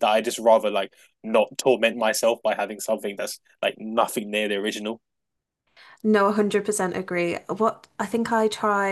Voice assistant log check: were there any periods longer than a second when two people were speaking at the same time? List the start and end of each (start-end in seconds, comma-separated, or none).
none